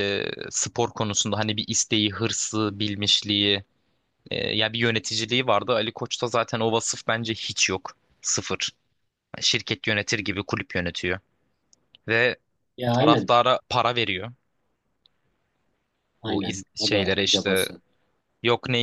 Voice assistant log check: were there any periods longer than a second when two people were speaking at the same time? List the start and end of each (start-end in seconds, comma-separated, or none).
16.3-17.7